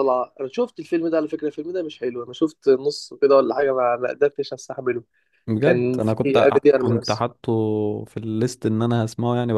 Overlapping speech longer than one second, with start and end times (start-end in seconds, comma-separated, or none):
5.6-7.3